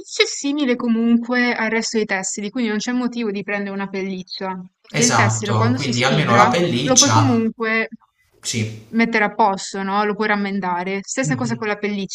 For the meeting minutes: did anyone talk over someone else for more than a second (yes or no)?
yes